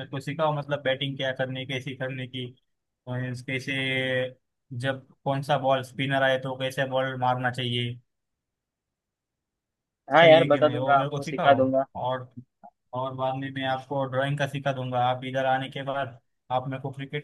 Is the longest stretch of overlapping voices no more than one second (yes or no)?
no